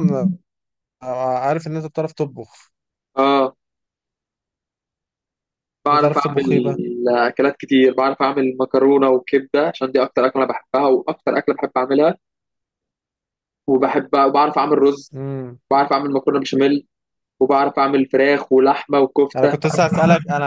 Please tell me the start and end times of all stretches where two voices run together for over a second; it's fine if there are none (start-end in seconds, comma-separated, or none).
none